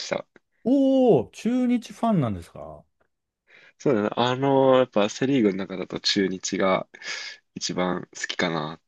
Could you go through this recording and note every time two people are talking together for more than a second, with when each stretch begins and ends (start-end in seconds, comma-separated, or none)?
none